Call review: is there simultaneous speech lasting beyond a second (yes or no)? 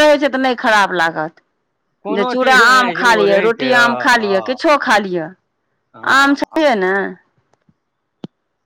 yes